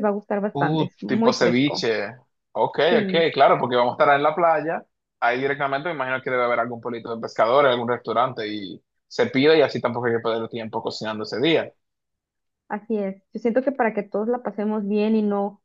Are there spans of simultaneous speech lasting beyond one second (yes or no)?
yes